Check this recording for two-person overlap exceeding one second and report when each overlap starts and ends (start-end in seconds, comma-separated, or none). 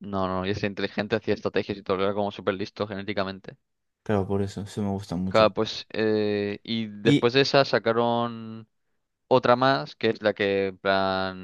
none